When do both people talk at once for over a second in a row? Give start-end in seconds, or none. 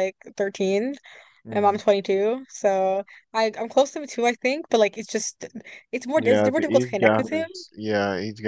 6.2-7.5